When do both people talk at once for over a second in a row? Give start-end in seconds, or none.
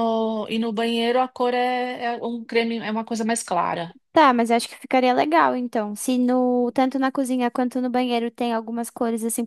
none